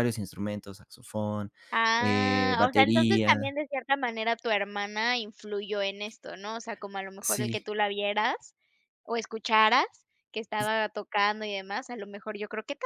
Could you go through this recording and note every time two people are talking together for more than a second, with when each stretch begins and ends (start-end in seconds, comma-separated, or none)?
2.0-3.4